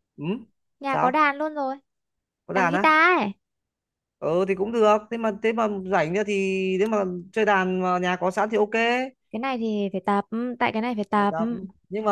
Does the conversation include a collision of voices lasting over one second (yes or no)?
no